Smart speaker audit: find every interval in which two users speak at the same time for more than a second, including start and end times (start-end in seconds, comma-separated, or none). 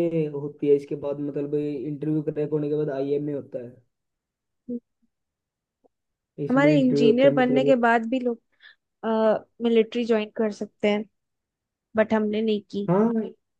6.5-7.7